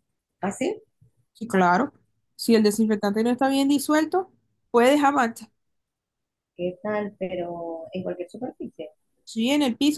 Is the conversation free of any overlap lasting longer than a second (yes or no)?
yes